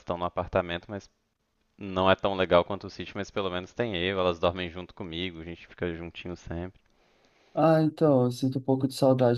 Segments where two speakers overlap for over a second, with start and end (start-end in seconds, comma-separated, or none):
none